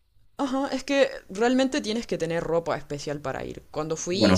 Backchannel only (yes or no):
yes